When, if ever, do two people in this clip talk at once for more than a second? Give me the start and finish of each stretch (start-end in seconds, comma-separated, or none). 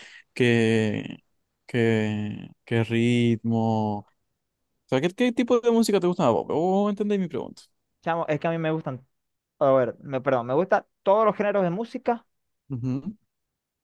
none